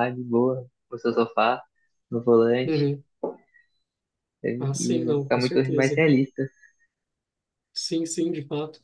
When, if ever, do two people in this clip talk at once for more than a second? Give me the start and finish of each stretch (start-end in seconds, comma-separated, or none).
4.6-6.0